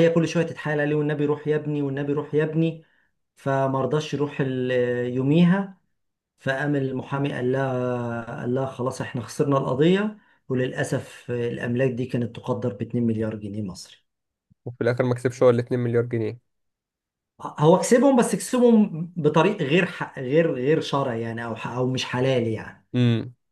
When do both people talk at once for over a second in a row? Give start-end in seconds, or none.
none